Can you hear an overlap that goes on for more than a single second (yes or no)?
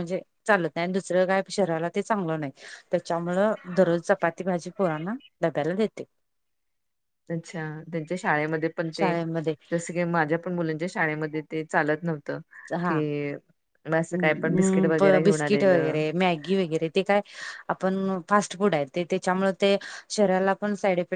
yes